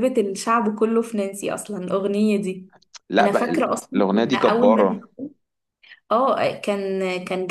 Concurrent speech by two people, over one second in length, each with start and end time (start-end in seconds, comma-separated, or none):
3.2-5.1